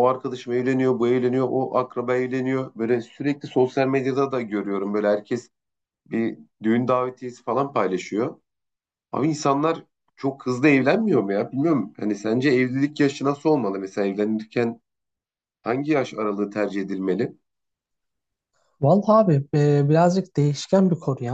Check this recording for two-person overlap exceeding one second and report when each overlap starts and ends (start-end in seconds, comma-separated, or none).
none